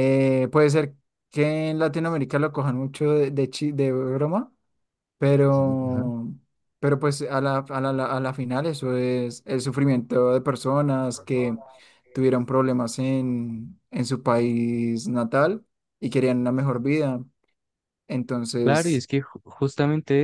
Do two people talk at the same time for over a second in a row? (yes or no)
no